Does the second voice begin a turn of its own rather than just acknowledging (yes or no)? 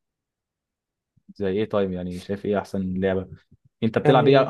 no